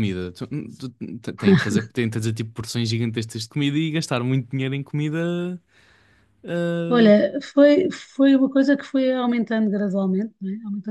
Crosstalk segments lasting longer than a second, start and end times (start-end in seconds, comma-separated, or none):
none